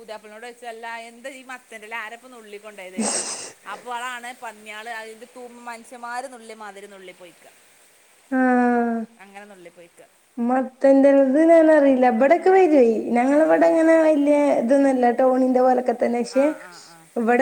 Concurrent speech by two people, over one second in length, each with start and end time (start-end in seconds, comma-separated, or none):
none